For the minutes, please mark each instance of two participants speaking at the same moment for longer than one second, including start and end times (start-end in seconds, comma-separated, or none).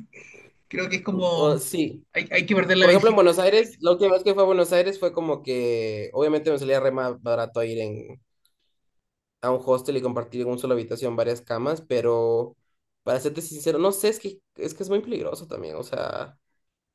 none